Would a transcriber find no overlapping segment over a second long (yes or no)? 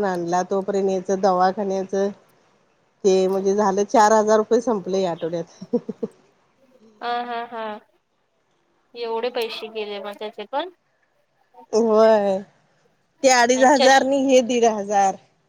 yes